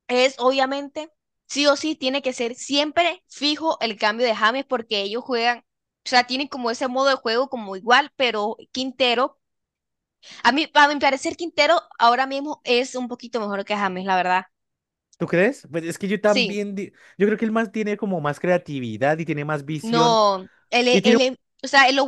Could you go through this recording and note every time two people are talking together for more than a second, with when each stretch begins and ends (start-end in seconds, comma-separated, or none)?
none